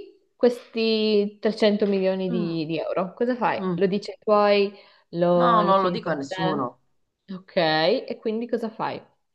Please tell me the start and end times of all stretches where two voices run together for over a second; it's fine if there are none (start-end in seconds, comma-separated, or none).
5.3-6.7